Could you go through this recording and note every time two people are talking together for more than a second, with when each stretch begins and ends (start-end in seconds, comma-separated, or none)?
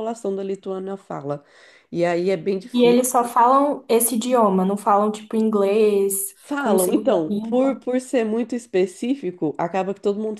6.4-7.8